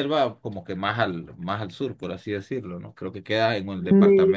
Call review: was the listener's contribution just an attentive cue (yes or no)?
yes